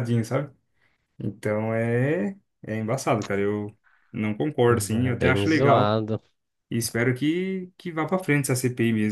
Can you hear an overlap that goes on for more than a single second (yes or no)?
yes